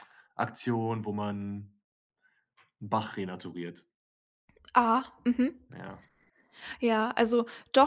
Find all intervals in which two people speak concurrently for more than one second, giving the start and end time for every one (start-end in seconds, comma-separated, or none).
none